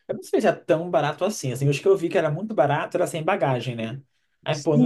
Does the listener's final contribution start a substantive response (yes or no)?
yes